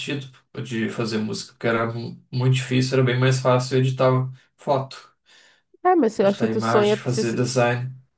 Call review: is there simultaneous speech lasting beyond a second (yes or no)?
yes